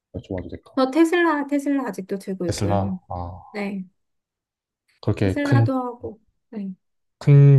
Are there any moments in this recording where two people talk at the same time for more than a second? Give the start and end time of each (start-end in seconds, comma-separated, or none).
none